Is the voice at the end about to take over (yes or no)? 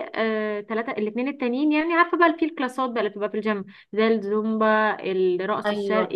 yes